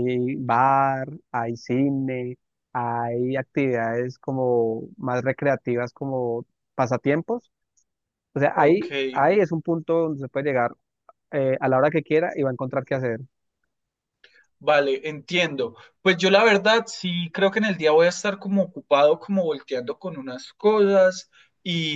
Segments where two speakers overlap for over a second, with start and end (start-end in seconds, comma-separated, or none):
none